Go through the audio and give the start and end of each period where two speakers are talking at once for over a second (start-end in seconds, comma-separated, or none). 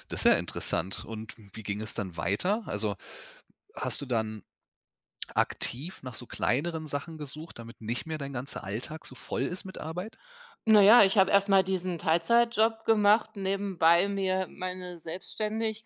none